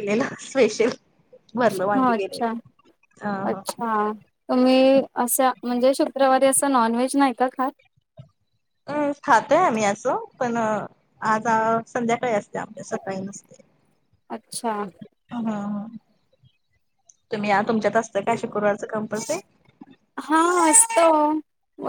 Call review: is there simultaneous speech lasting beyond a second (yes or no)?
no